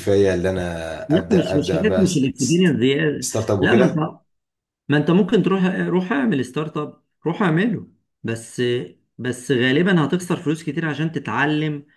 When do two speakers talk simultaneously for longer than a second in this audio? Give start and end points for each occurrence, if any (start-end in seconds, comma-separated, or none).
1.1-2.8